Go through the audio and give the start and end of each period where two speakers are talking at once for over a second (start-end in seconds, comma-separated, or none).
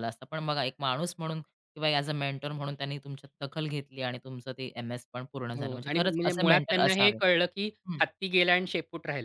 5.6-7.2